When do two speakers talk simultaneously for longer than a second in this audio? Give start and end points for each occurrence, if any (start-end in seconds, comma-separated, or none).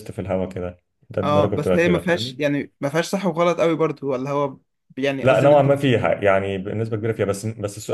1.2-2.4